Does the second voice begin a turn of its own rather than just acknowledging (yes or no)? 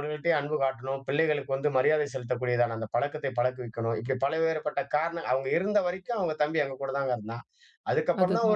no